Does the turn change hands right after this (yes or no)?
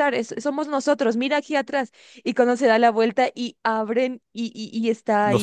no